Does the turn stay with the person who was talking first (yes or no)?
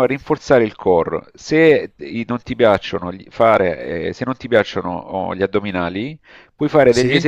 yes